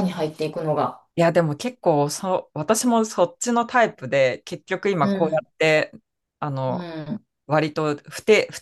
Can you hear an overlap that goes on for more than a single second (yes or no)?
no